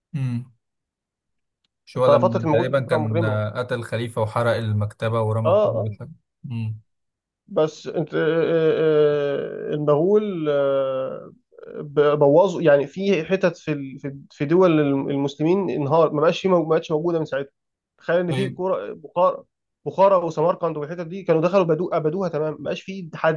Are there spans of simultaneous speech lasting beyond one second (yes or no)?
yes